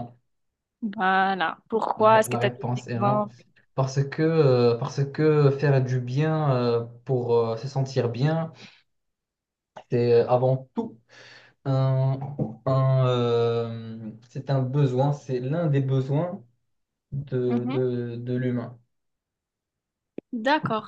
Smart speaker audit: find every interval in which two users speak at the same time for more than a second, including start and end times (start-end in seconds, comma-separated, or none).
2.0-3.2